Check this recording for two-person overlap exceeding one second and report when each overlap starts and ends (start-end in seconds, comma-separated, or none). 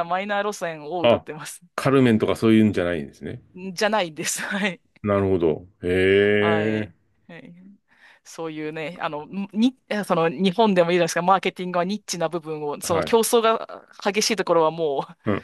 none